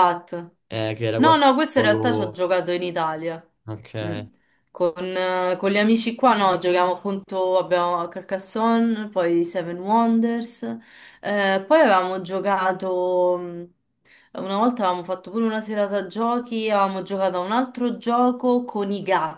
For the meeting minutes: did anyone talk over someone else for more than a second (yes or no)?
yes